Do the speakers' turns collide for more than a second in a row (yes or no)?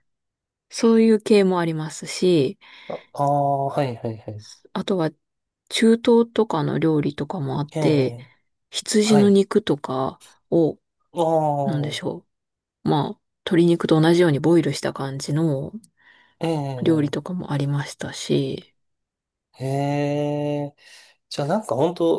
no